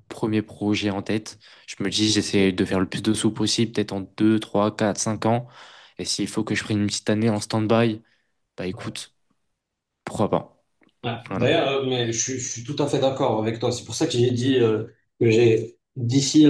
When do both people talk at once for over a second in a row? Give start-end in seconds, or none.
none